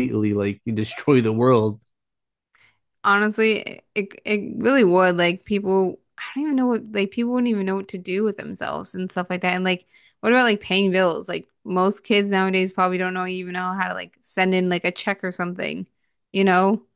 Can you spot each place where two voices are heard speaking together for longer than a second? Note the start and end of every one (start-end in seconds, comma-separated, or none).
none